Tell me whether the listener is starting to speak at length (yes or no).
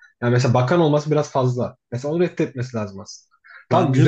no